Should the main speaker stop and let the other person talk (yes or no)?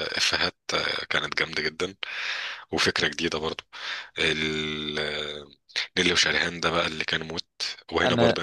no